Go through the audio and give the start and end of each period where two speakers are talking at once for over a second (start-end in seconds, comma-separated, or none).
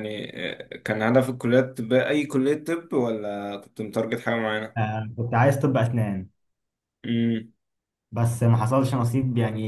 none